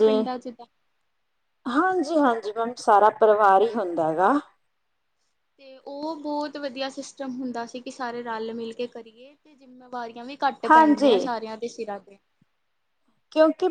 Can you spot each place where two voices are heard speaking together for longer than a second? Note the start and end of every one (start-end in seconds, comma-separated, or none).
none